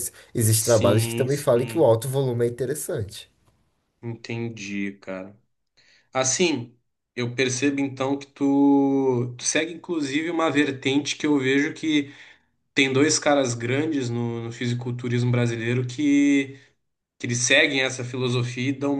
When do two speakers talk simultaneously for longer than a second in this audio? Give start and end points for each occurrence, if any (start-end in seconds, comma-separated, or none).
0.6-1.9